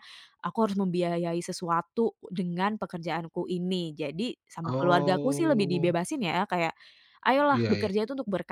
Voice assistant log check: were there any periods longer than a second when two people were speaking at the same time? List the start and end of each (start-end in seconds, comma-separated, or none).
4.7-6.0